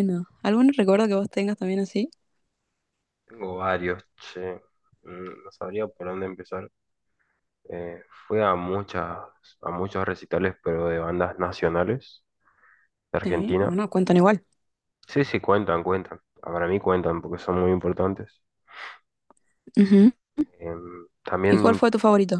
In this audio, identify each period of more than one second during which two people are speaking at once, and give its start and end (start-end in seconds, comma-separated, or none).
none